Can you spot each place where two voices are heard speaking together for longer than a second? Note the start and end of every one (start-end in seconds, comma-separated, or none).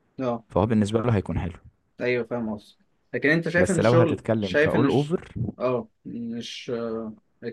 3.6-5.2